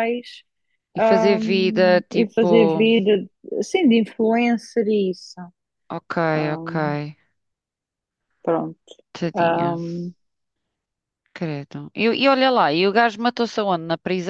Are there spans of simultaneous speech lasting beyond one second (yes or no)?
yes